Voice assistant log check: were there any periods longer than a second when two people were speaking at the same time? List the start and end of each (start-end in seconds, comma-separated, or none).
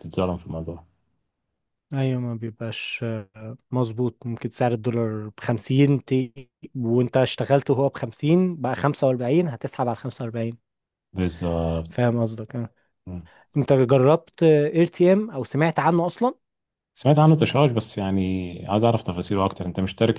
none